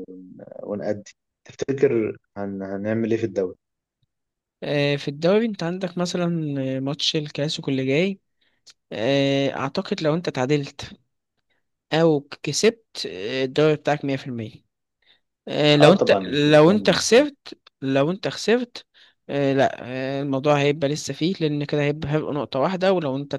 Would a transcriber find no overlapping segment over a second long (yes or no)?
no